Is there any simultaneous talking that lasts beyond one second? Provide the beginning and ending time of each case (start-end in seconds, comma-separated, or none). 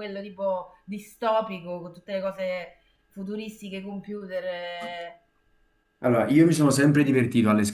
none